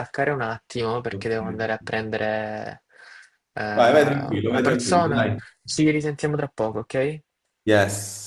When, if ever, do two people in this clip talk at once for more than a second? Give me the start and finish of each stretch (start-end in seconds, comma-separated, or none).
3.7-5.2